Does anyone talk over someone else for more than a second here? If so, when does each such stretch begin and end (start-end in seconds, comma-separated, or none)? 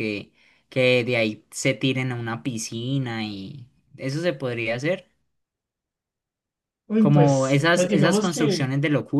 7.0-8.7